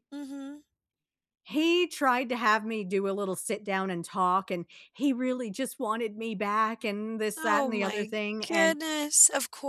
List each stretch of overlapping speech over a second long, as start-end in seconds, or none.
7.4-8.8